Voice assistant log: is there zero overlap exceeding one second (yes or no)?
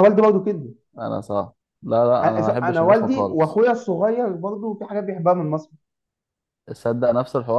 no